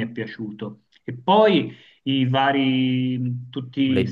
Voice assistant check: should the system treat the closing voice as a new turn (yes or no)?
no